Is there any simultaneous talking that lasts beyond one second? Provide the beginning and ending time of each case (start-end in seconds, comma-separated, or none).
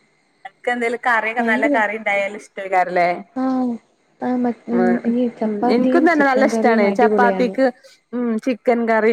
5.5-7.5